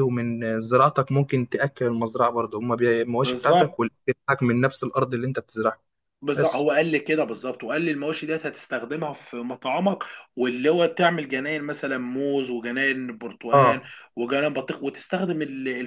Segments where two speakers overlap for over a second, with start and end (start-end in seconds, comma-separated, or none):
none